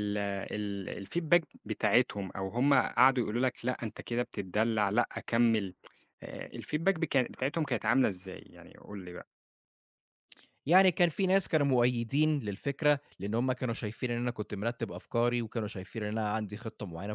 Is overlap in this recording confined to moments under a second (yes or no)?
yes